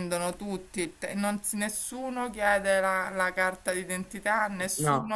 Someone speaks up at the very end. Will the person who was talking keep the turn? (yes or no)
yes